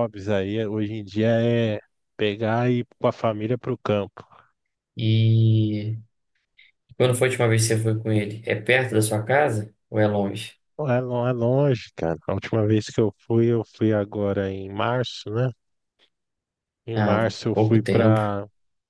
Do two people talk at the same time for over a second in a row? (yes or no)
yes